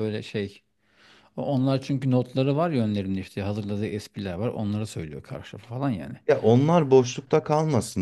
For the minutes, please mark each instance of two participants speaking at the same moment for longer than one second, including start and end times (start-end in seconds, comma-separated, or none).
none